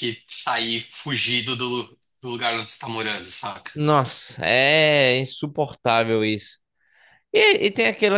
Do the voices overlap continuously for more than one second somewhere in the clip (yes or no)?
no